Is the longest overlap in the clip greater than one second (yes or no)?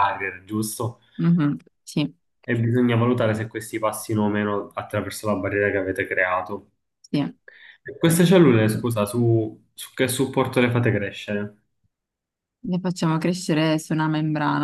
no